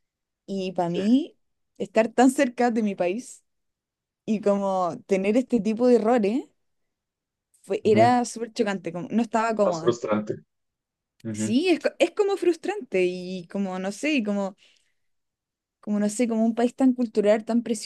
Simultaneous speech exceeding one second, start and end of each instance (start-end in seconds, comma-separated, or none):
none